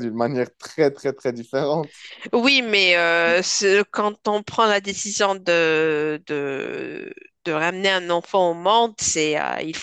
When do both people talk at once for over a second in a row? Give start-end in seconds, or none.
none